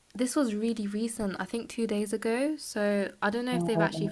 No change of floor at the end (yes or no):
yes